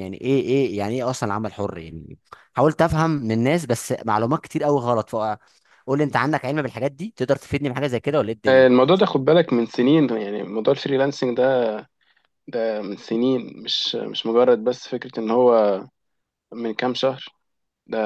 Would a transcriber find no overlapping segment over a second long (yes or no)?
yes